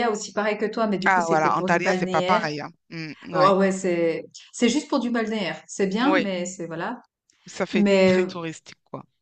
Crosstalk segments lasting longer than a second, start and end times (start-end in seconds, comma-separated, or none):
1.0-2.5